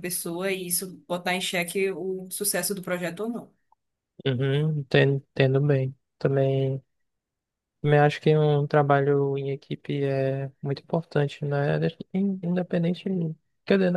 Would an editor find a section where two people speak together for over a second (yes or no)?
no